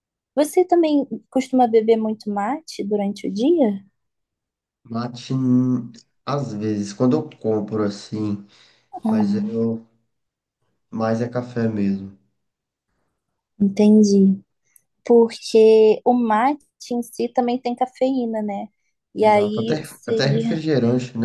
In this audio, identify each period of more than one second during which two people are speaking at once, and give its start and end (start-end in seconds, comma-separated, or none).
19.2-20.6